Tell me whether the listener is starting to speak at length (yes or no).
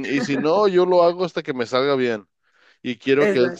no